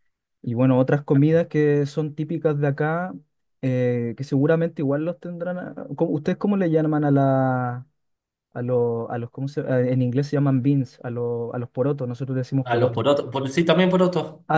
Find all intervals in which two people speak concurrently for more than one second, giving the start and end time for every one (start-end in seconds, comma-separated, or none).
none